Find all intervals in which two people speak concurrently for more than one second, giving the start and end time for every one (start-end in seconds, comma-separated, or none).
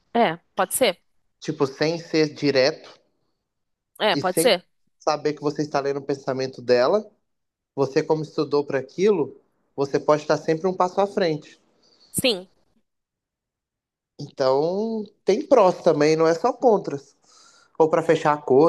none